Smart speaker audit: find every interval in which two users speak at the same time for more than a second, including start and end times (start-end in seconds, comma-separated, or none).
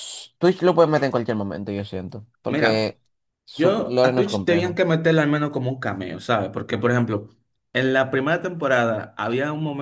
3.5-4.8